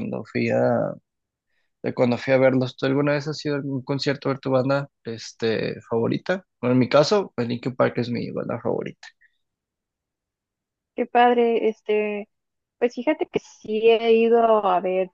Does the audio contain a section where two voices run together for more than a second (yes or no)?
no